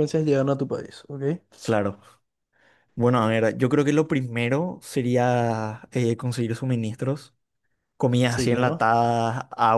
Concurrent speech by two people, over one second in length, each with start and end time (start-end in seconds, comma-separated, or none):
none